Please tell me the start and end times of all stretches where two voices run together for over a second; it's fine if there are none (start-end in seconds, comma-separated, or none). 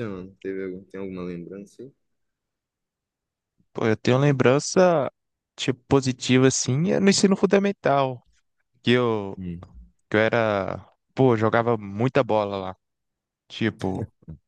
none